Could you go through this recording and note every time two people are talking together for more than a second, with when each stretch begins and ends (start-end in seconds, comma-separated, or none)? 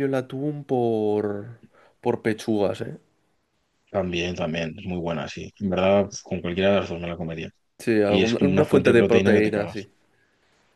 8.1-9.9